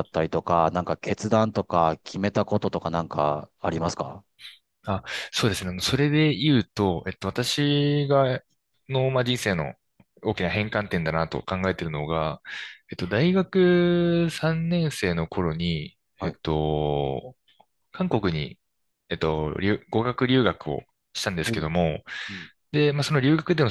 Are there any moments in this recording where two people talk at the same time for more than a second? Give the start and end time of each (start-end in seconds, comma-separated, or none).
none